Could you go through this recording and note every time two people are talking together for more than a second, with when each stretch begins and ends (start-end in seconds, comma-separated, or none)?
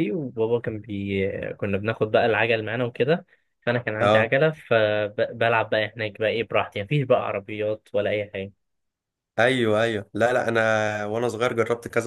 none